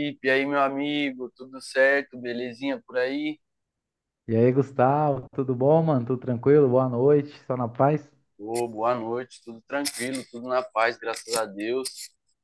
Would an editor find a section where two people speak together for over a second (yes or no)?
no